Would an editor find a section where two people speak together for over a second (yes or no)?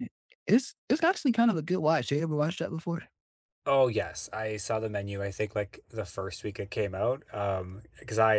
no